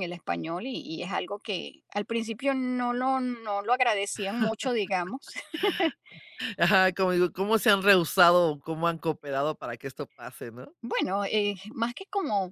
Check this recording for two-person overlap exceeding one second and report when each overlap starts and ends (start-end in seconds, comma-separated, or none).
none